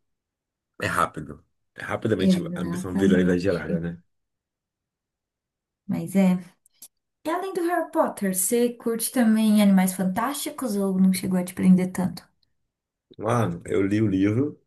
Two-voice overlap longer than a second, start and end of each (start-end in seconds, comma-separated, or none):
2.2-3.5